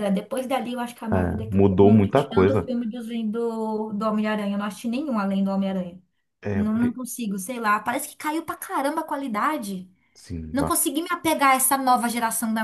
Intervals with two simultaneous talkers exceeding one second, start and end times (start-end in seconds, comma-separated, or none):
1.5-2.7